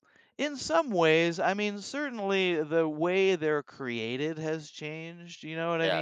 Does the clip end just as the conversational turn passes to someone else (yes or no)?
yes